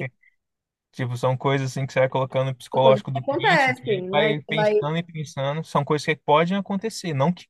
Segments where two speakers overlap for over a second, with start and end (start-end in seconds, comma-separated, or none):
2.7-4.7